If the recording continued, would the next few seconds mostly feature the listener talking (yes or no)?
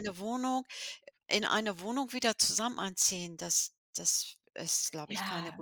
yes